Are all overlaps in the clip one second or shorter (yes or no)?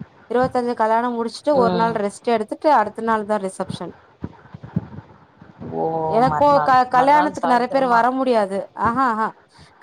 no